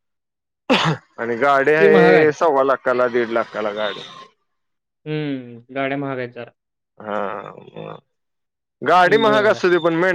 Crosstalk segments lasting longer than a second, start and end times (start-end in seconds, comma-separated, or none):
none